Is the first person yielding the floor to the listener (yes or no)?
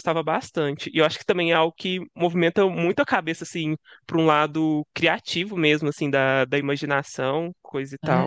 yes